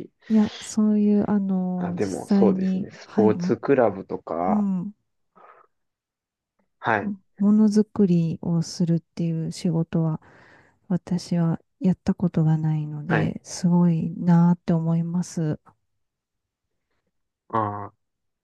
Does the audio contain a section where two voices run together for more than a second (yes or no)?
yes